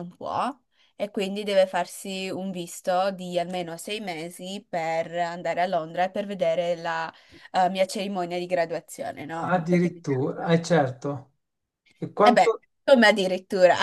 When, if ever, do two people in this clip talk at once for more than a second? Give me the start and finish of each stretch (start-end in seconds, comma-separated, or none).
9.4-10.6